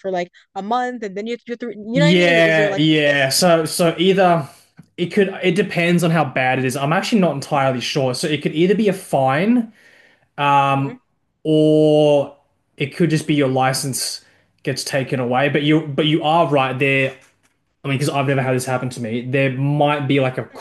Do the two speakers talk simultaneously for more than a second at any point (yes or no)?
yes